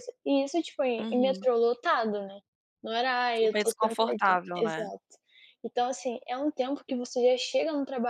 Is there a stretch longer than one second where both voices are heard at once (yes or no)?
yes